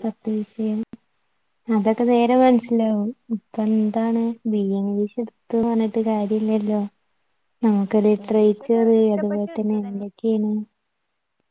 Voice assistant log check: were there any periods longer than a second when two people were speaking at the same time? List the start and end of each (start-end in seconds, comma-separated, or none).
8.2-10.1